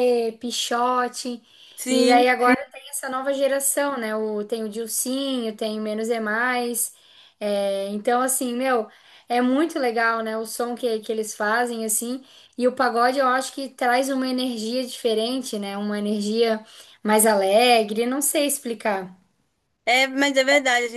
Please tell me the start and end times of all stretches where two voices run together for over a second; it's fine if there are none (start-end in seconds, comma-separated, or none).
none